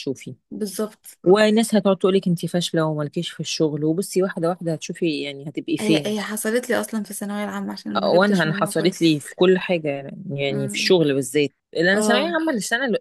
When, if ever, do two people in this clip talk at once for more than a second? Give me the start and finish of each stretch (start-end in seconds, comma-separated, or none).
8.0-9.3